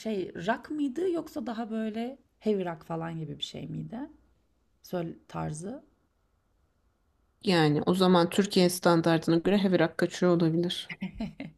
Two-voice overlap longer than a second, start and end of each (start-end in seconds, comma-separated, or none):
none